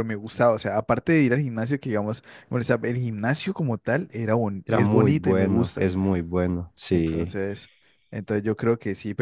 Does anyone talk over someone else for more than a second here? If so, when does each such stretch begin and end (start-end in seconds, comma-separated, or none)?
4.7-5.9